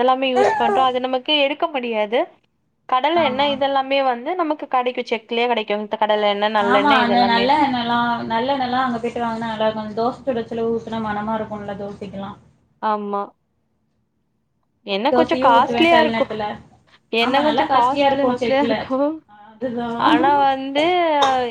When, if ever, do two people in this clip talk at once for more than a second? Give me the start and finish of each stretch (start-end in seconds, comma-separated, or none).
14.9-16.2, 17.3-18.7